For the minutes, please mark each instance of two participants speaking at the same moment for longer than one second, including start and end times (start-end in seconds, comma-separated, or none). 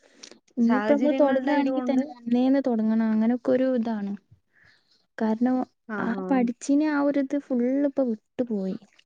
0.7-2.0